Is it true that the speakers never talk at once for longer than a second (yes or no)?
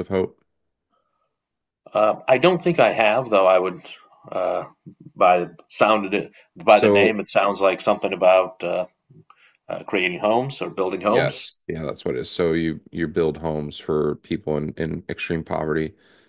yes